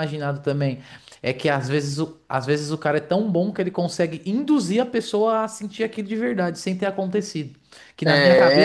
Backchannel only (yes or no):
yes